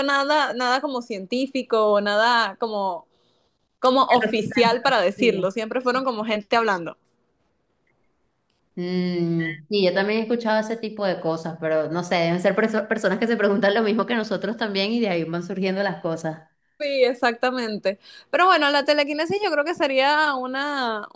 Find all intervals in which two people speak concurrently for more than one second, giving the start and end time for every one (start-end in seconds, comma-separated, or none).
4.1-5.5